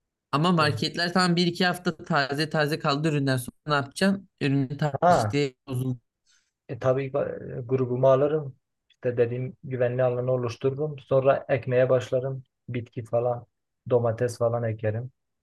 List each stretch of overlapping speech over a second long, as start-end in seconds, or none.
none